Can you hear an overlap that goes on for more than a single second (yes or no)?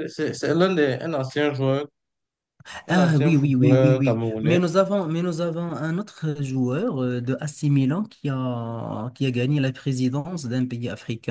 yes